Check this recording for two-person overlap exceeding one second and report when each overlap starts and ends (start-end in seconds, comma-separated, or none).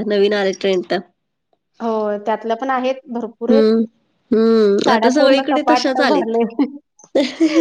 4.8-6.4